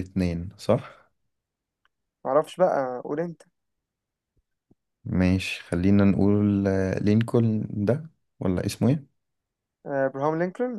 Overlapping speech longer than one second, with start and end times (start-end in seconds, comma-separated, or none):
none